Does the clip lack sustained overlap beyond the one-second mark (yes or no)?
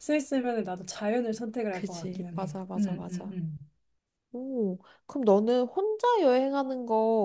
no